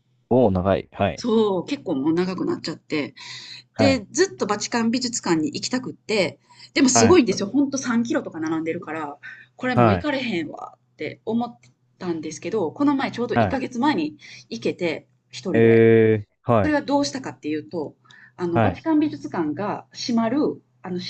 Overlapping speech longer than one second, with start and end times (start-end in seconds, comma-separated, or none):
none